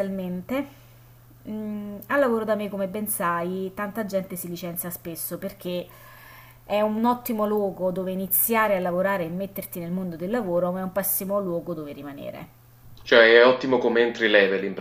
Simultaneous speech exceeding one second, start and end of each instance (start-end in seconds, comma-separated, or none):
none